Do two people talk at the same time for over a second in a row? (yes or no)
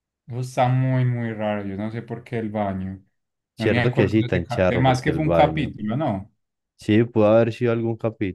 yes